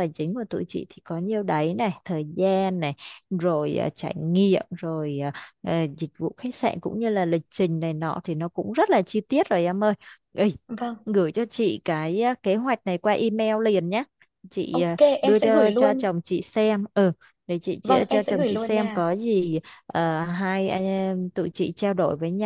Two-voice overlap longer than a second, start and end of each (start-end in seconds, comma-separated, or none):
14.7-16.1, 17.8-19.1